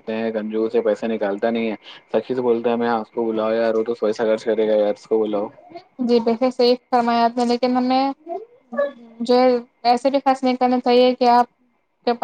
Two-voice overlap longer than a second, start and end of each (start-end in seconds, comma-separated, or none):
none